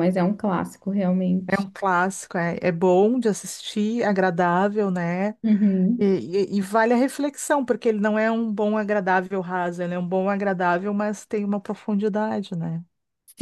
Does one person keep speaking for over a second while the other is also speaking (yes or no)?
no